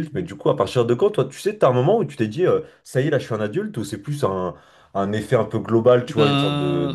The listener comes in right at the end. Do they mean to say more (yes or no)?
no